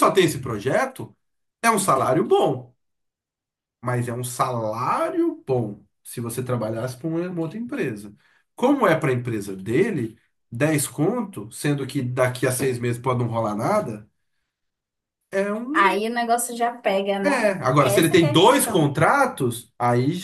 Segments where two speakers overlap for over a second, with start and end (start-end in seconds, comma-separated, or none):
17.2-18.9